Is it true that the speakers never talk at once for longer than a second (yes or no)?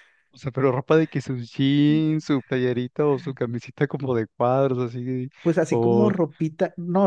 yes